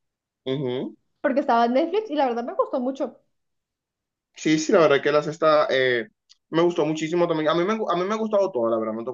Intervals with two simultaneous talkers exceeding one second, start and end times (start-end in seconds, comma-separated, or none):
none